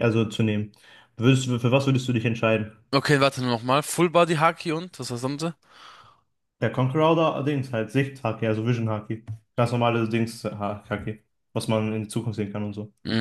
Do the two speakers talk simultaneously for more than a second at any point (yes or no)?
no